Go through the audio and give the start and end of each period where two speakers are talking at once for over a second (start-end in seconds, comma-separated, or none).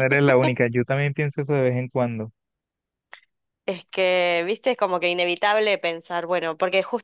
none